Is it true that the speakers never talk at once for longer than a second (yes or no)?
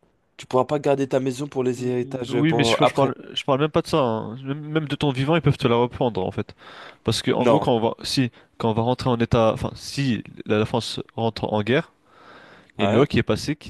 no